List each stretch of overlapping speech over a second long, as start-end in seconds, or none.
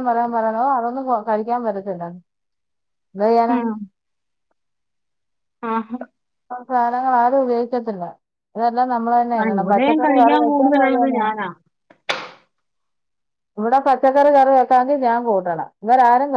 9.4-11.2